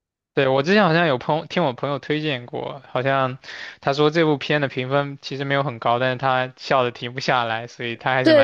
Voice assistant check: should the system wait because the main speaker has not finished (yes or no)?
no